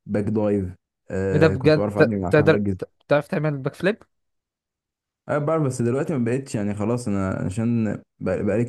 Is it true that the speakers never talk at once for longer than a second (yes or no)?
no